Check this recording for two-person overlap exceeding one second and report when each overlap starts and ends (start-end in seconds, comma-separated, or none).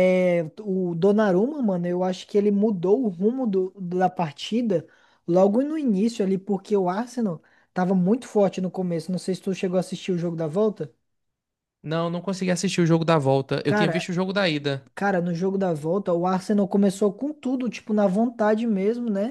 none